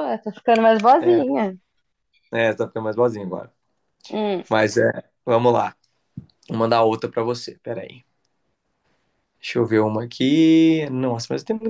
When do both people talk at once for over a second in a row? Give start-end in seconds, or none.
none